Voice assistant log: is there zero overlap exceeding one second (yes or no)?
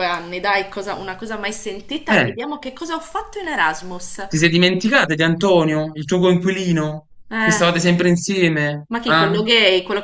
yes